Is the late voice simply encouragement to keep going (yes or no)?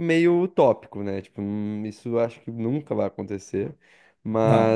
yes